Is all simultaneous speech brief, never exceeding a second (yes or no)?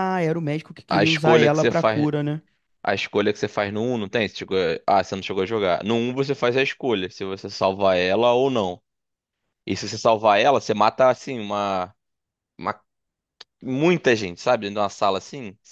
no